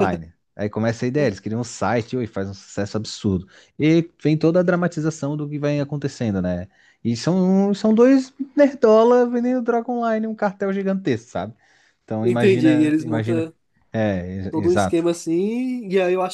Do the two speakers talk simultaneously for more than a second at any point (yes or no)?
yes